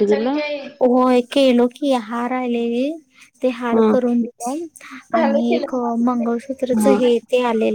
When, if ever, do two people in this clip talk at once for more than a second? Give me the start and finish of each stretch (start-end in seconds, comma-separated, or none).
5.2-7.0